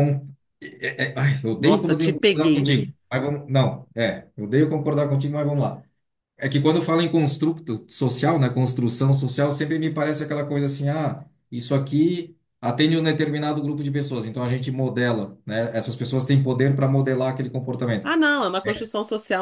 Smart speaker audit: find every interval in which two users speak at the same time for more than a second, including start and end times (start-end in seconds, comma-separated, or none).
1.6-2.8